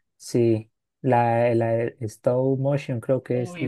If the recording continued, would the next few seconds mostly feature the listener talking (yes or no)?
yes